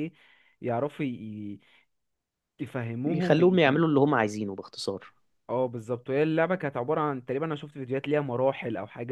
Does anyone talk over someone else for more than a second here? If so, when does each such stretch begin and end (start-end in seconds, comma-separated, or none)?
none